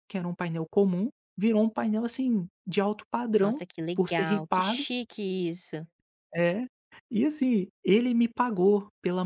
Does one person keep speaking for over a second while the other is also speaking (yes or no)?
yes